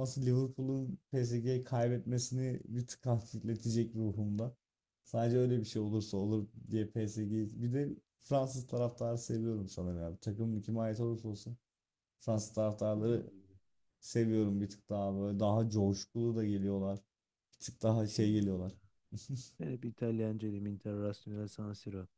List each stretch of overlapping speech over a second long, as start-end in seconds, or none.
none